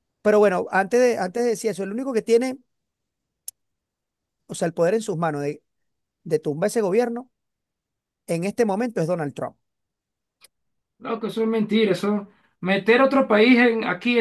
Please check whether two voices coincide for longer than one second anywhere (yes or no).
no